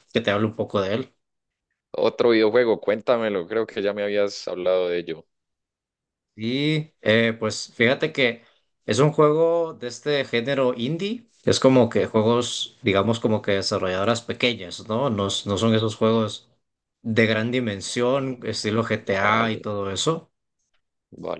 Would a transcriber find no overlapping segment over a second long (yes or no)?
yes